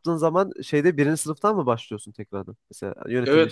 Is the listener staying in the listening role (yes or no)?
no